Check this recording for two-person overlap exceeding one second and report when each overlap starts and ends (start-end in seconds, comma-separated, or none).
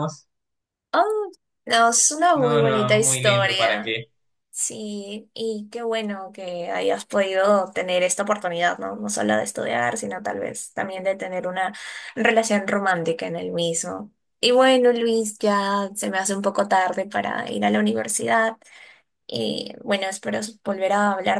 2.3-4.0